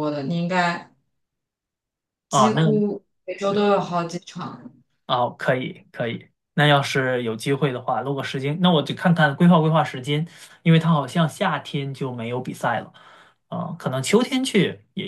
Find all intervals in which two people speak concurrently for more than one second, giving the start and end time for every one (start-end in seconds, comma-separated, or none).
none